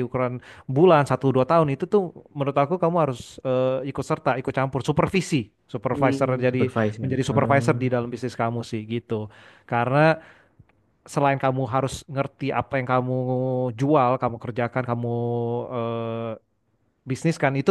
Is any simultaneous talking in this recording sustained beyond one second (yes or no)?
yes